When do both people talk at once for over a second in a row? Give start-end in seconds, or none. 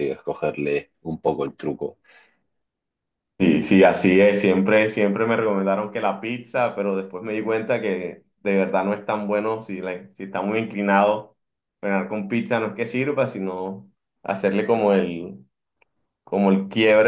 none